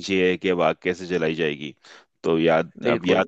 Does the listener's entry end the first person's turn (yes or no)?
no